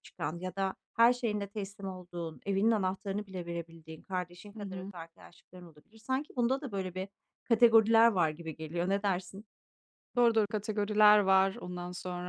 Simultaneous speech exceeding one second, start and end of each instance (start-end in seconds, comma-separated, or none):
none